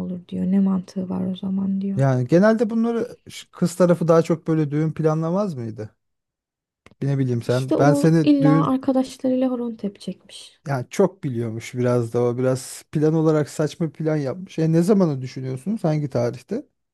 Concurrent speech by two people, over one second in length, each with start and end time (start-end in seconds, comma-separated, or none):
7.5-8.8